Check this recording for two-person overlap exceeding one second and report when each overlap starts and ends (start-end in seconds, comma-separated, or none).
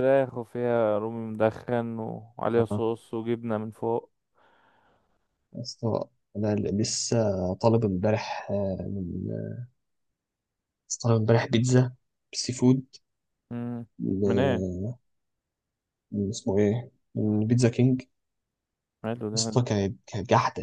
none